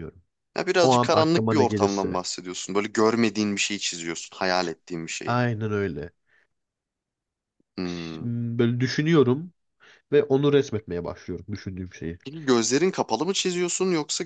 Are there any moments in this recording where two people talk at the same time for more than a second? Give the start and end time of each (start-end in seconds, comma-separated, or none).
0.8-2.2